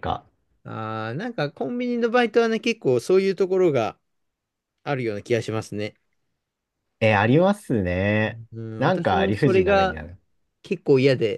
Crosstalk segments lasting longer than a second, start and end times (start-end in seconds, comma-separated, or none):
8.8-10.0